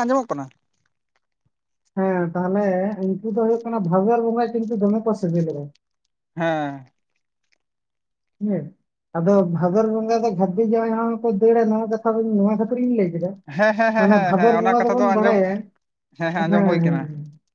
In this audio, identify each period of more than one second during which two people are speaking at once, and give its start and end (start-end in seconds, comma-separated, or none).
14.0-15.4